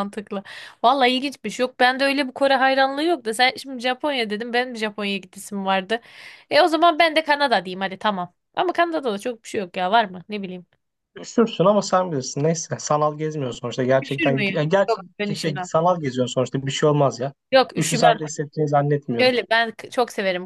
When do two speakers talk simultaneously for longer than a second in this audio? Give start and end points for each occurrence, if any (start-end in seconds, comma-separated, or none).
14.0-15.7